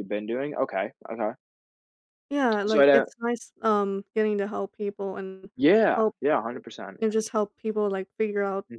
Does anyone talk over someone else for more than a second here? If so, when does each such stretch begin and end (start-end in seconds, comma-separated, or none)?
none